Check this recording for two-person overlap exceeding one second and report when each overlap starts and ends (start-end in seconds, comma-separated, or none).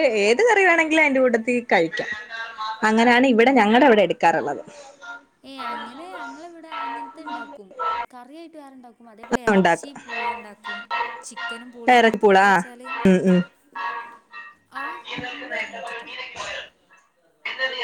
none